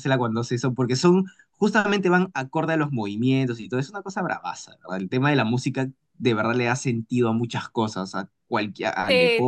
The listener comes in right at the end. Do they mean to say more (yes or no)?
no